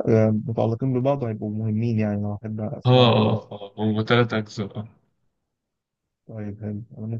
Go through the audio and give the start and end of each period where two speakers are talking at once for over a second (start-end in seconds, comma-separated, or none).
none